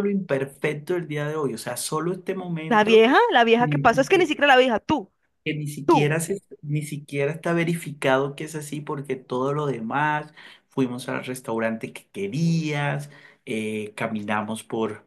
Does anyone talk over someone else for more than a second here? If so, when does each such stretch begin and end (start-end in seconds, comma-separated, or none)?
none